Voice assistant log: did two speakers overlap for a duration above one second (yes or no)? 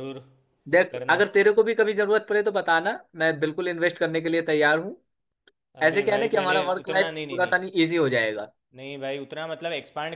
yes